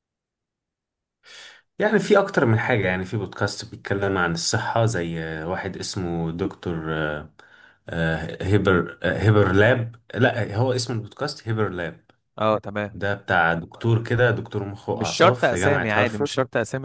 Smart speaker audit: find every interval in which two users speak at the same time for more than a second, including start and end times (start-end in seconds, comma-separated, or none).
14.9-16.3